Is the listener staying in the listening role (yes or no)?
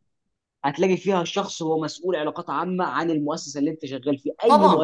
no